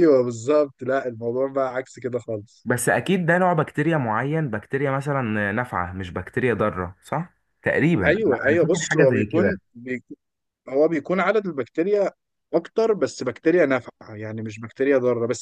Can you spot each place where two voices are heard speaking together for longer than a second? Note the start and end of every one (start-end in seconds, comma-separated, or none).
8.1-9.6